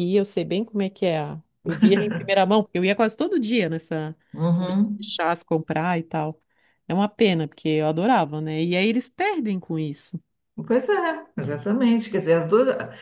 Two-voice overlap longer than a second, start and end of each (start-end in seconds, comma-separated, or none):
none